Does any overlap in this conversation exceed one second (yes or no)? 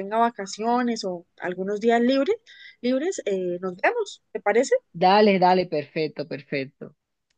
no